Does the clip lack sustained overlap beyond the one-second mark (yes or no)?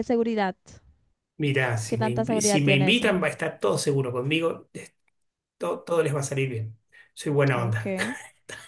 no